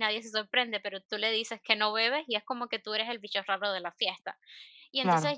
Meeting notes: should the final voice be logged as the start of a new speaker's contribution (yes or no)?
no